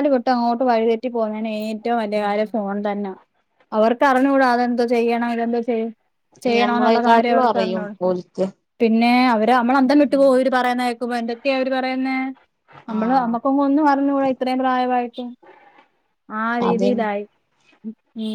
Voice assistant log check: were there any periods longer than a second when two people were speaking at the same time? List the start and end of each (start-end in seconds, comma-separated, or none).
6.5-7.9